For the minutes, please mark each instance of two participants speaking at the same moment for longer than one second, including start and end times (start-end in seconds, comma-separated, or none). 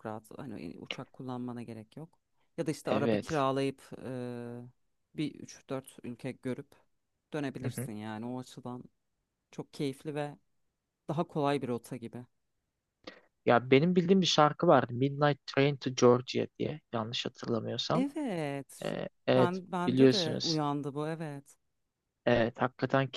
18.9-20.6